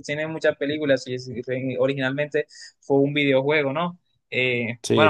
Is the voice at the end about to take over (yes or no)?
no